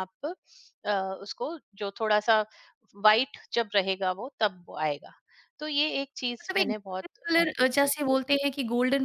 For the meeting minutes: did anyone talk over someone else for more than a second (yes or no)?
yes